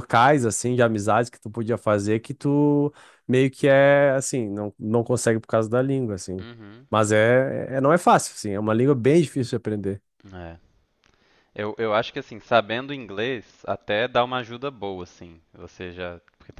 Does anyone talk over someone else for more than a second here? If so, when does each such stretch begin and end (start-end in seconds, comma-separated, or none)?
none